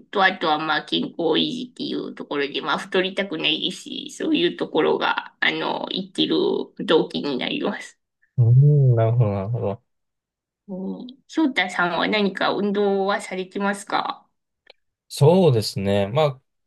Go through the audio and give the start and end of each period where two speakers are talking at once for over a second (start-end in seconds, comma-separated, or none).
none